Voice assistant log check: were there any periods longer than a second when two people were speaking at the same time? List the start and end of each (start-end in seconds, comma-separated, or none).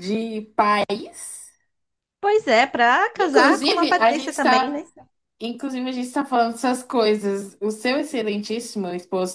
3.2-4.8